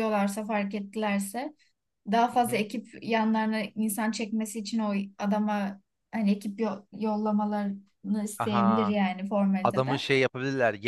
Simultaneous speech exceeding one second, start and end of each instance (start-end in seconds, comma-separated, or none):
none